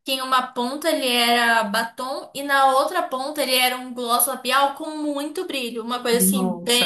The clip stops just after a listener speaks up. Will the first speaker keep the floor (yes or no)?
no